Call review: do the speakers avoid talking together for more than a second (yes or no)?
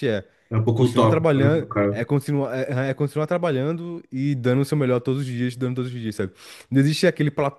no